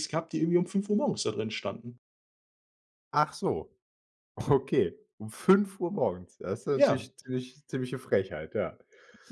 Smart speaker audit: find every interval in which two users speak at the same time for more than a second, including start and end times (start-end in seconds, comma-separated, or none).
none